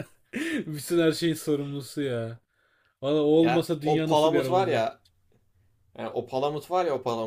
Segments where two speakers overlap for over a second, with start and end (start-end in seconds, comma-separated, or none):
3.4-4.9